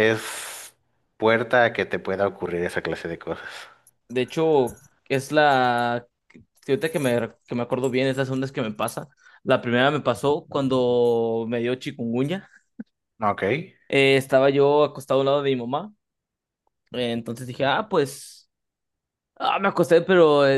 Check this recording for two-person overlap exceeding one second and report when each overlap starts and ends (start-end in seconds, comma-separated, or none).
none